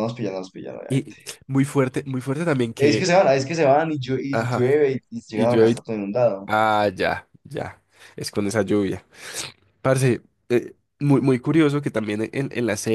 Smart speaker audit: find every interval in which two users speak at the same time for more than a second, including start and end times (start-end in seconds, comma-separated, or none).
none